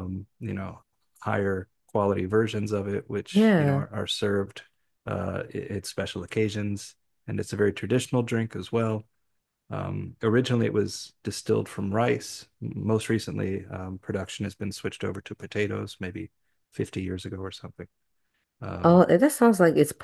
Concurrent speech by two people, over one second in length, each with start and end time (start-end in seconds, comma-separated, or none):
none